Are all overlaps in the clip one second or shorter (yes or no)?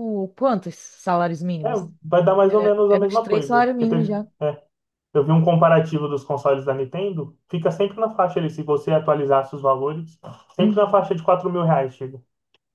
no